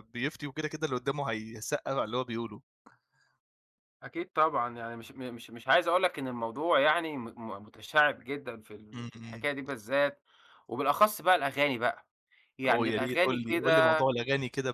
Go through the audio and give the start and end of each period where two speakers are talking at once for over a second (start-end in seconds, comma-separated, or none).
12.7-14.0